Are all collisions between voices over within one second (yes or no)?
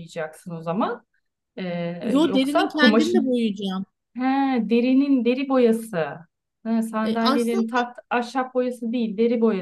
no